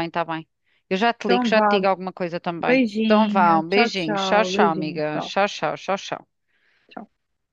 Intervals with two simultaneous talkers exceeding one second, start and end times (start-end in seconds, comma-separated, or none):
2.7-5.3